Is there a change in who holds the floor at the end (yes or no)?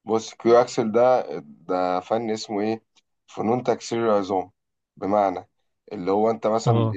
no